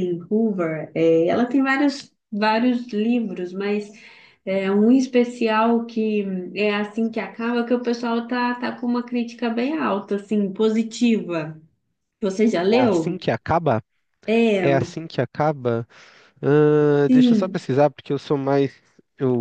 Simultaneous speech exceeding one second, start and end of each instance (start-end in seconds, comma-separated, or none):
none